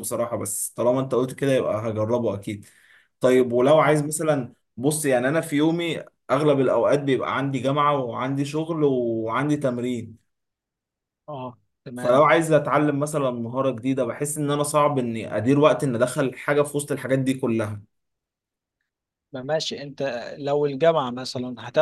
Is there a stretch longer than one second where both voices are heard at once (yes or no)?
no